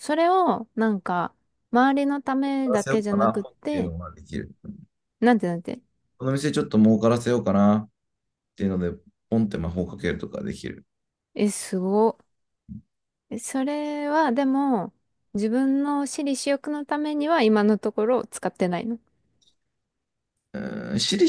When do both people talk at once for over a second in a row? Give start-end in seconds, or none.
2.4-3.9